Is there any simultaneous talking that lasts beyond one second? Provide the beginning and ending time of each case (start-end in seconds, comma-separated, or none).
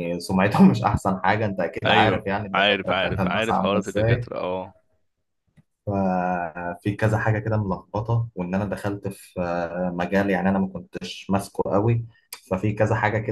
1.9-4.3